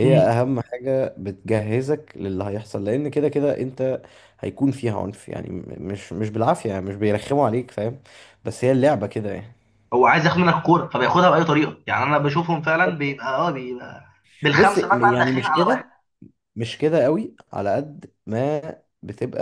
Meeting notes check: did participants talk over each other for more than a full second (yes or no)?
yes